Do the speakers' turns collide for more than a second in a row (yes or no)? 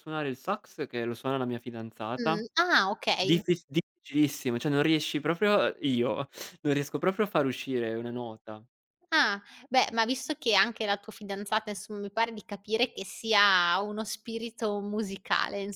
no